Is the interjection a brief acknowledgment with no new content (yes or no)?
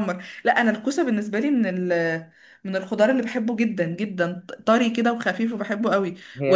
yes